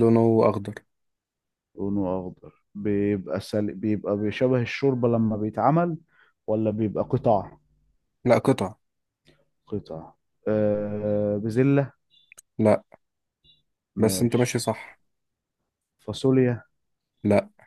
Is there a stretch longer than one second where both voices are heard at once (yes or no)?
no